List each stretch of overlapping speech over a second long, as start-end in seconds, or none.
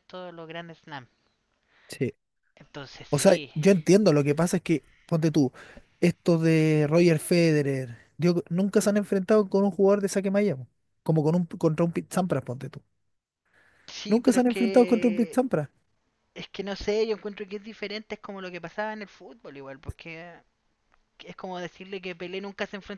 14.1-15.4